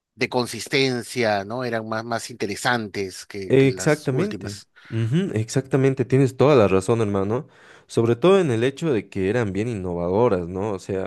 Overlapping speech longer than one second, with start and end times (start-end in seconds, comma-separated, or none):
3.5-4.7